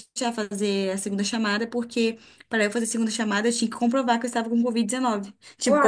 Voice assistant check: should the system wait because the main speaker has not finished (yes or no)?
yes